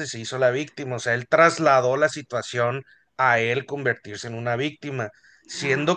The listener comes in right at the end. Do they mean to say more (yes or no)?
no